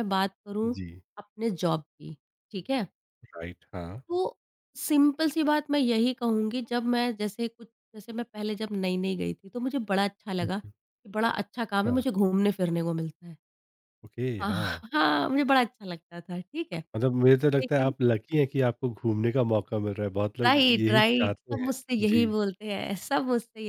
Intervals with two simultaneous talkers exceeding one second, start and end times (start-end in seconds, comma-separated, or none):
20.4-22.3